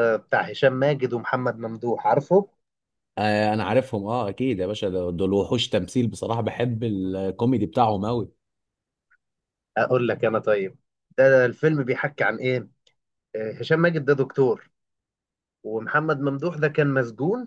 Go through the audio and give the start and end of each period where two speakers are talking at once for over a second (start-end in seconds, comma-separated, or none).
none